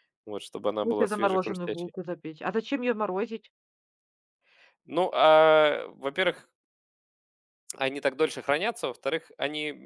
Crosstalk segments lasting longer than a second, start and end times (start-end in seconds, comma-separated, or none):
0.7-1.9